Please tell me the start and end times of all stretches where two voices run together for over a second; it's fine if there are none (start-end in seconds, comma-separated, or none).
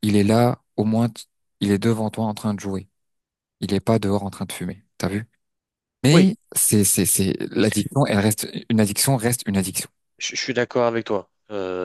none